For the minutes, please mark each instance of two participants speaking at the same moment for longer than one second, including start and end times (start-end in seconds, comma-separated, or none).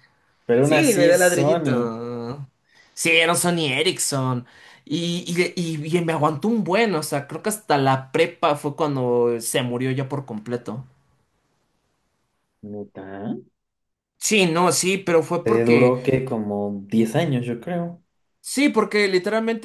0.6-1.9